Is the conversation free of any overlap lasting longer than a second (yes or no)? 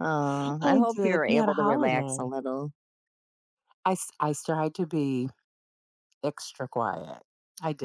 no